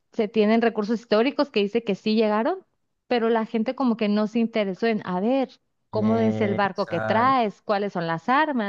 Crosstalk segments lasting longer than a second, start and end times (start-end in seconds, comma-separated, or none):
5.9-7.4